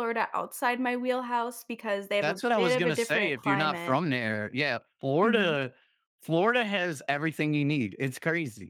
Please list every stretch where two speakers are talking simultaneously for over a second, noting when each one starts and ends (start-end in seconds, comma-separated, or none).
2.2-4.0